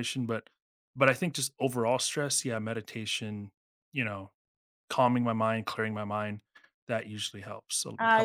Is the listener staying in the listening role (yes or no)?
no